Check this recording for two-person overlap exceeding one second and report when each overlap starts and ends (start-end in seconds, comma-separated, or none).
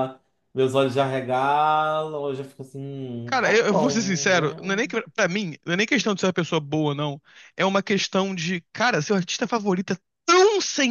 3.2-4.6